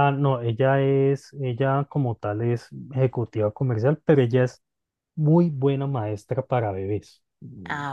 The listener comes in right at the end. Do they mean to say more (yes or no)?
no